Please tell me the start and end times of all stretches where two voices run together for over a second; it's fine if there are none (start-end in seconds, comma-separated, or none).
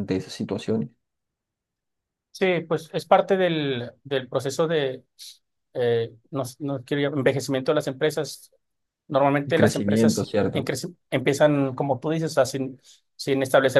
9.4-10.7